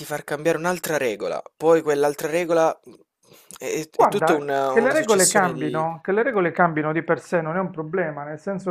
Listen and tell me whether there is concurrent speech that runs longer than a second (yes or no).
yes